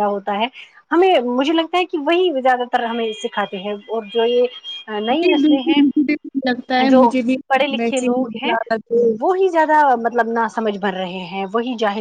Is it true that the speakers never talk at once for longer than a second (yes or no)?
yes